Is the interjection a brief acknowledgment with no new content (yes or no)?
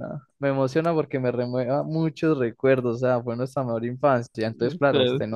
yes